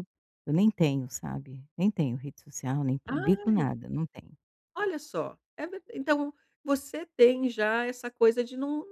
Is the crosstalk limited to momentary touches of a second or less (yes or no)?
yes